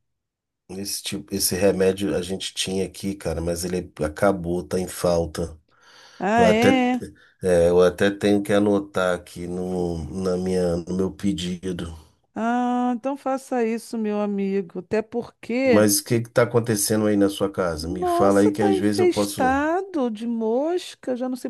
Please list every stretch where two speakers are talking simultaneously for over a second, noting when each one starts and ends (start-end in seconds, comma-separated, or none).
17.8-19.4